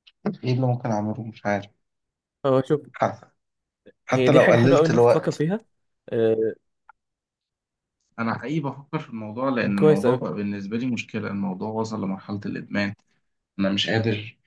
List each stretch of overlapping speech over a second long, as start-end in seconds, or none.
4.1-5.5